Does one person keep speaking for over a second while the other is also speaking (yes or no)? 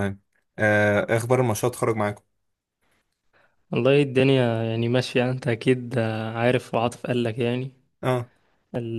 no